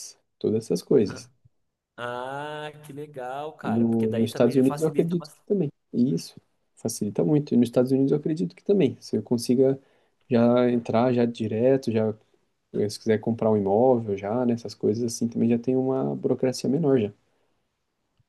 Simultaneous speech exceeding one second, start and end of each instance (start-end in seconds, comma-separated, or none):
3.6-5.5